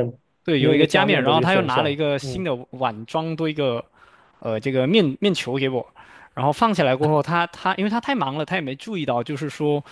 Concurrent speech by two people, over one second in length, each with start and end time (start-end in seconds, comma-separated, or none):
0.6-2.4